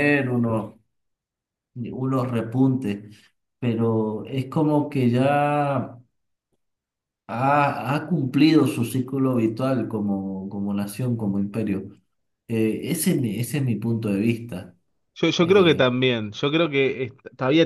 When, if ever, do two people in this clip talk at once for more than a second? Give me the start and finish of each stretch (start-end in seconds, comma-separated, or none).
none